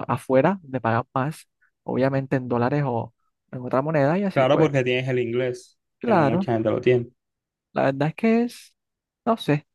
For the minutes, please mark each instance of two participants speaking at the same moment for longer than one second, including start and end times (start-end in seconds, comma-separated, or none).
none